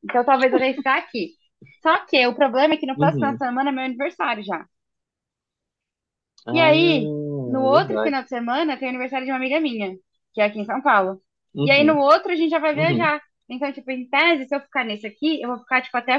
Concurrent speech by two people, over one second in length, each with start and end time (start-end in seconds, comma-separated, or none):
6.5-8.2